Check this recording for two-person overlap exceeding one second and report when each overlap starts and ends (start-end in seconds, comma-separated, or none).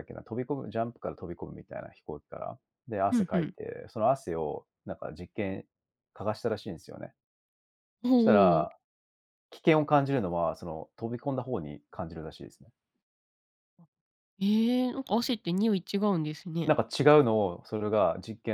none